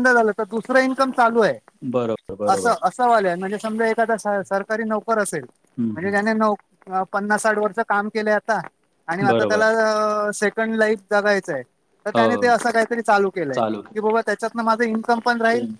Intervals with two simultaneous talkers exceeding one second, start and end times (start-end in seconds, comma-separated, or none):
none